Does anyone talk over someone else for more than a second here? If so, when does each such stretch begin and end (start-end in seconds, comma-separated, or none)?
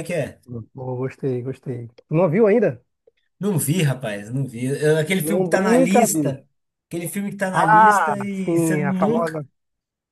5.2-6.4, 7.5-9.4